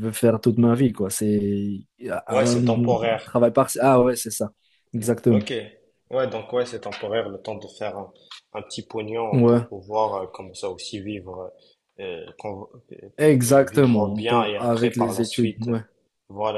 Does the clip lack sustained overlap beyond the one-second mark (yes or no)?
no